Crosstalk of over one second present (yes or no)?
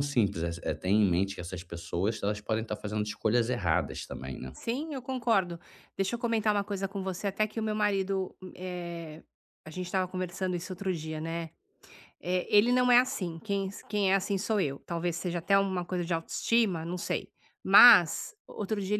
no